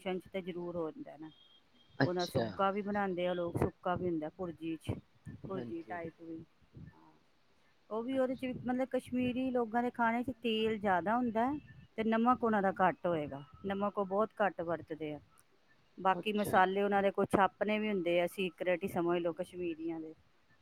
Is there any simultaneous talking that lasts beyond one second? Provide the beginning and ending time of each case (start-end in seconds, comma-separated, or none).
none